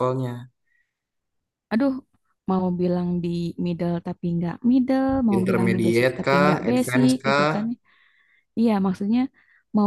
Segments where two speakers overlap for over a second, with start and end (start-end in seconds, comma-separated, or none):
5.4-7.7